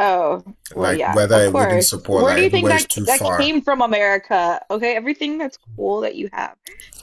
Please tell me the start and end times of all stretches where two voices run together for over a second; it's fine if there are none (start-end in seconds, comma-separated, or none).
0.8-3.6